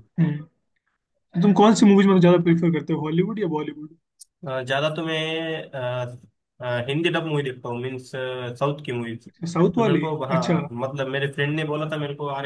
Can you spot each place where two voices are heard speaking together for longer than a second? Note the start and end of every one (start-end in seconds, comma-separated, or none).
9.3-10.7